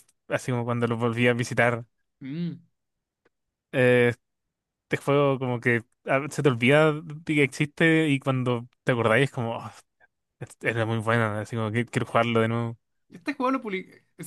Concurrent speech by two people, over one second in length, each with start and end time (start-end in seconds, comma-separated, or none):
none